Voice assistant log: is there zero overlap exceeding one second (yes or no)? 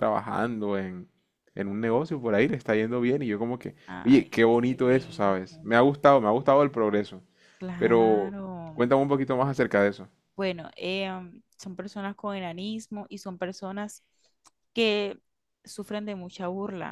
no